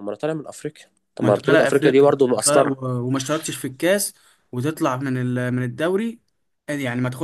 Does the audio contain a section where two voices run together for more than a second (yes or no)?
yes